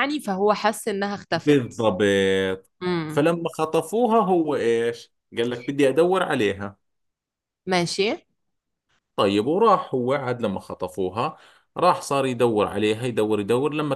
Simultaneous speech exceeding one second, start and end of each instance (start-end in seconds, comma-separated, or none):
none